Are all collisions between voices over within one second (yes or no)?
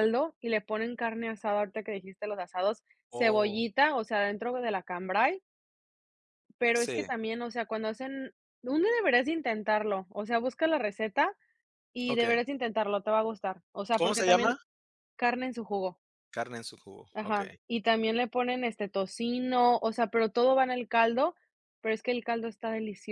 yes